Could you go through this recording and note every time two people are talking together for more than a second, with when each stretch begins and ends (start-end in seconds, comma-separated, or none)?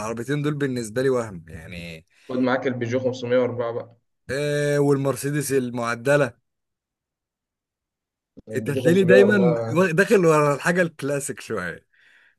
8.6-9.9